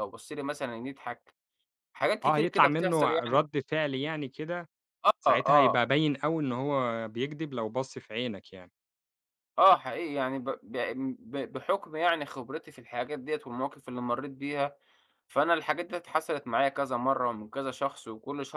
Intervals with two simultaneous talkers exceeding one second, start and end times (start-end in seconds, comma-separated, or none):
2.2-3.5